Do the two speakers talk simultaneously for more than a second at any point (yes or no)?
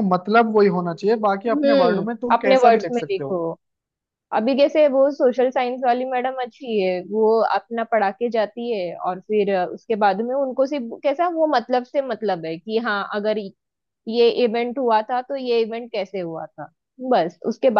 yes